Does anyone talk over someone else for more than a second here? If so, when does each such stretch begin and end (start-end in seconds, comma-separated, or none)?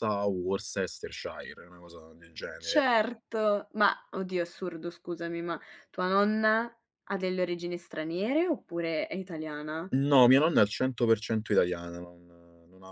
none